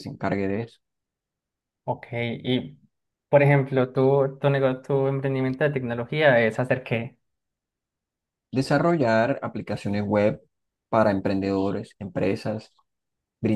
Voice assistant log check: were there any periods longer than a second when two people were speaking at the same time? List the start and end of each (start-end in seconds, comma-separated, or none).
none